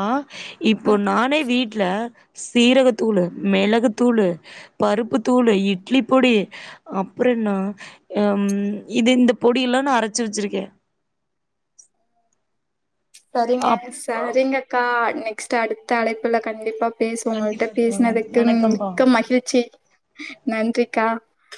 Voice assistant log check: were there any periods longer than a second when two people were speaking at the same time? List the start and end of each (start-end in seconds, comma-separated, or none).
17.3-18.9